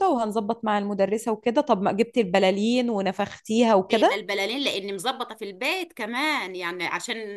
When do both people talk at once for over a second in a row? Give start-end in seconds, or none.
none